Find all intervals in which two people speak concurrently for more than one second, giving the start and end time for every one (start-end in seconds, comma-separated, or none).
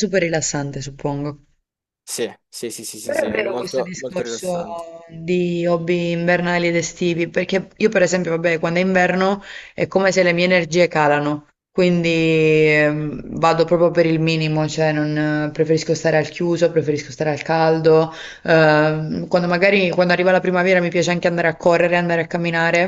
3.0-4.7